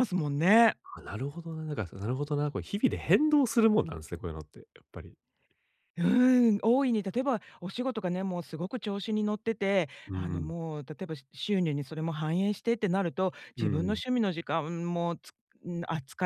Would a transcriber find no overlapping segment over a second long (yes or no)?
yes